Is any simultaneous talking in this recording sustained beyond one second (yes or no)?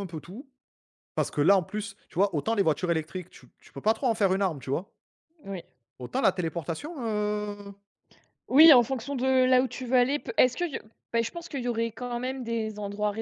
no